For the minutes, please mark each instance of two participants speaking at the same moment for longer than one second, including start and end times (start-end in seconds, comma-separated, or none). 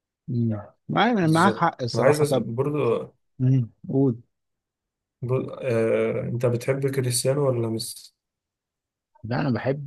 1.2-2.5